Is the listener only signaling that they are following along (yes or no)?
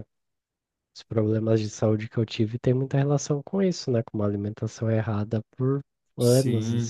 no